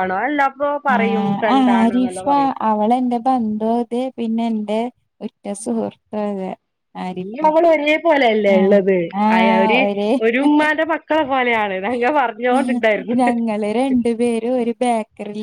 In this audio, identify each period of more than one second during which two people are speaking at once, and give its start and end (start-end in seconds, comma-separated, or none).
none